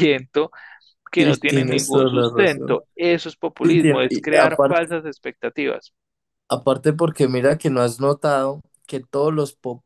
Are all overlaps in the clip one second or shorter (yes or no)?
no